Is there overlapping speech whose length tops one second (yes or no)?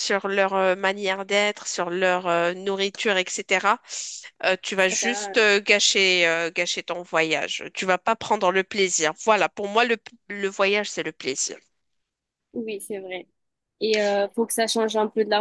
no